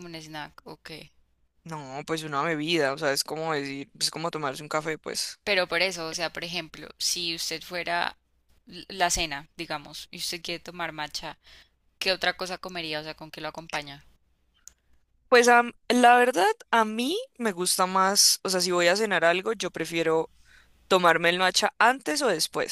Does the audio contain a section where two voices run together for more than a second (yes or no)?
no